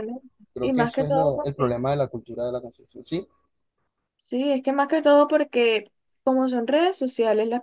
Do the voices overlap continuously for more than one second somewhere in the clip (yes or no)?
yes